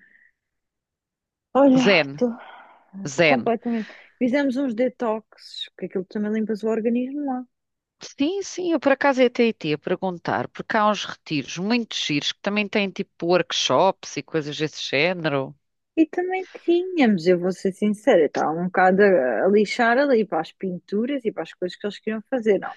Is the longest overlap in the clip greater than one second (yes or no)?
no